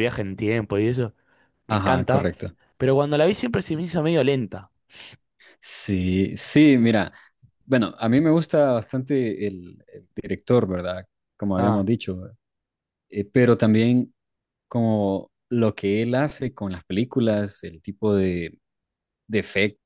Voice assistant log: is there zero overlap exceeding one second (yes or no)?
yes